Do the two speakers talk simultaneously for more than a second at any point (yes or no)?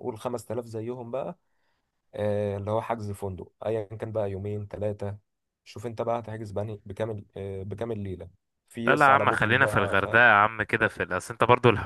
yes